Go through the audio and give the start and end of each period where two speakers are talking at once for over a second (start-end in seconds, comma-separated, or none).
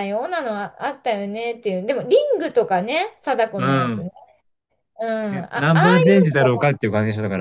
5.3-6.8